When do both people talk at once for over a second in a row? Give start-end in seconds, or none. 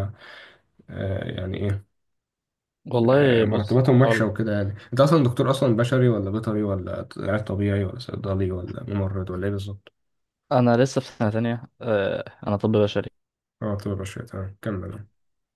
3.0-4.3